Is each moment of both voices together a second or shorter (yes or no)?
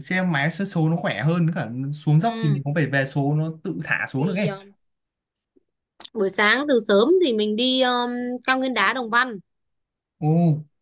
yes